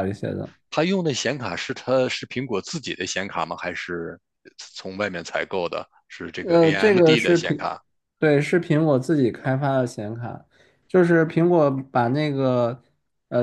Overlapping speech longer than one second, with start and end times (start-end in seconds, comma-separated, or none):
6.4-7.7